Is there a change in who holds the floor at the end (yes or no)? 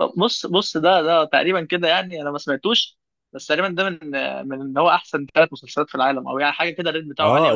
yes